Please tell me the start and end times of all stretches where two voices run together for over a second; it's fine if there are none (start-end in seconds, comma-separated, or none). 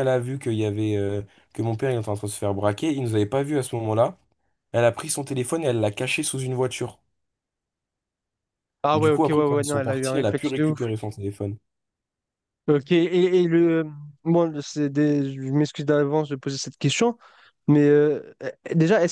8.9-10.8